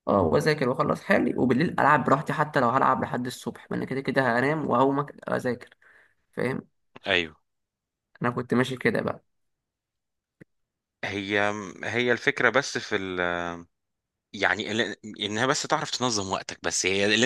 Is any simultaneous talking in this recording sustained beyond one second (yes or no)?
no